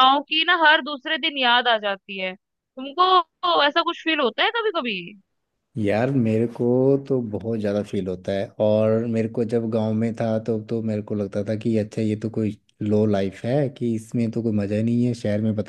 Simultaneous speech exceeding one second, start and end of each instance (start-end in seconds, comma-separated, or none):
none